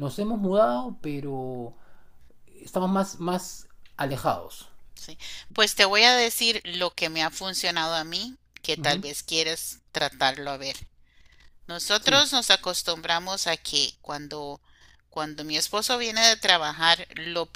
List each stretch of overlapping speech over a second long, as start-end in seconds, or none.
none